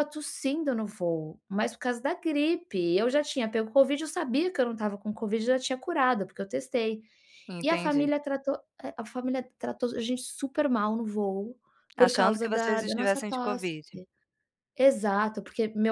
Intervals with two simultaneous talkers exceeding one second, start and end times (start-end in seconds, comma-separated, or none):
12.0-13.7